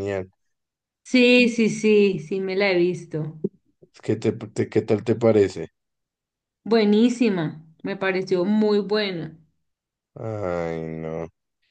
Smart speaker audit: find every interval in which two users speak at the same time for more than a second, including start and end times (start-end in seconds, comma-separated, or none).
none